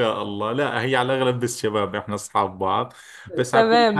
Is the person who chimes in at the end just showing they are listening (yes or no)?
no